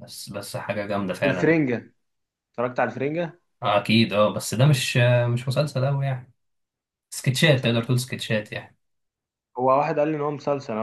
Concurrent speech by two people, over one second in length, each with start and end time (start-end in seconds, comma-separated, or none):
none